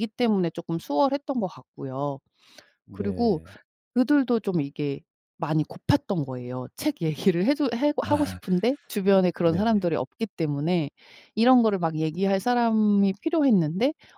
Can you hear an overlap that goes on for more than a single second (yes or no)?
no